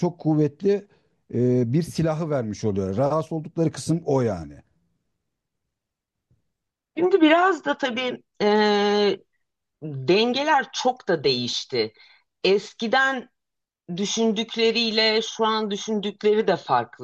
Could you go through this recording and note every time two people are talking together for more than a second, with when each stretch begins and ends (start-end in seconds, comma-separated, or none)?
none